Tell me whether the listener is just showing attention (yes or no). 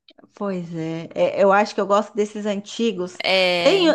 yes